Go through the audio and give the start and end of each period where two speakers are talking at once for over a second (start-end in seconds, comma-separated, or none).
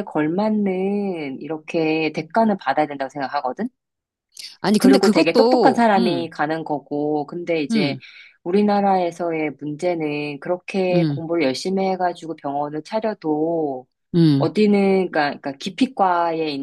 4.8-6.3